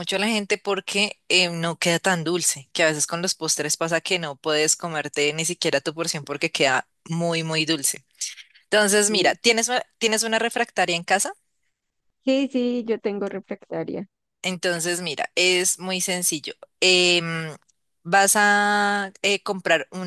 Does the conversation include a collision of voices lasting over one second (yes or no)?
no